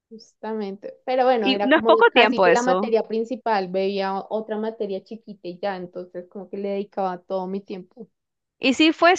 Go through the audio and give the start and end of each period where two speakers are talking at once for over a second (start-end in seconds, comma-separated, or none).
1.4-3.0